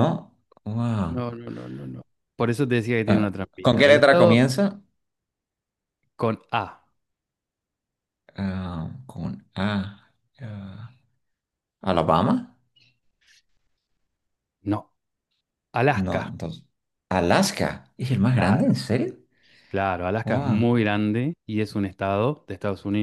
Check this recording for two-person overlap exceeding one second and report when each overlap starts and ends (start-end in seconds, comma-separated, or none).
3.1-4.4